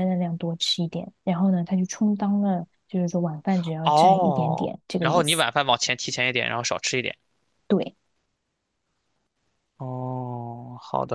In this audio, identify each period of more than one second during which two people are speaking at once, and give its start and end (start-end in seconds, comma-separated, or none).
3.8-5.4